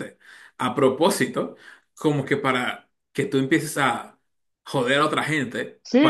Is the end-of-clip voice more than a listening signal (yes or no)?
yes